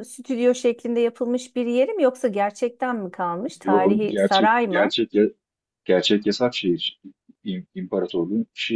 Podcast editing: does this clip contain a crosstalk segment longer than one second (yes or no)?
yes